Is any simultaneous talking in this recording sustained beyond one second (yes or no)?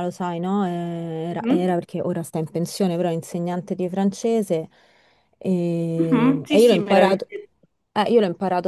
yes